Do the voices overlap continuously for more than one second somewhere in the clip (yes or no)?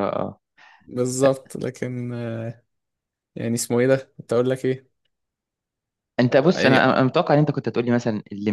no